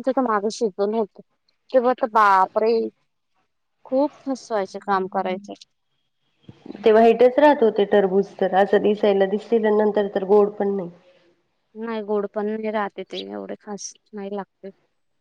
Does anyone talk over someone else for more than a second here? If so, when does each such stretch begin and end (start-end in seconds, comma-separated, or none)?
none